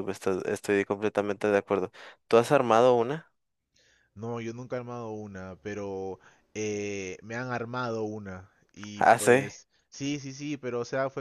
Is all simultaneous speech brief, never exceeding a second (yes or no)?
yes